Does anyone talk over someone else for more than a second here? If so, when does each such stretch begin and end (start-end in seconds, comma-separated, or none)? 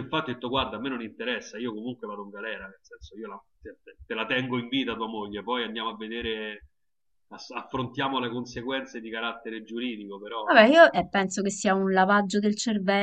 none